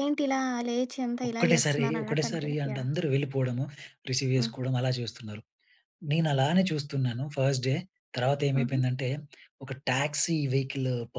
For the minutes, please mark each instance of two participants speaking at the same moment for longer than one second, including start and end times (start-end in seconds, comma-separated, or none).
1.3-2.9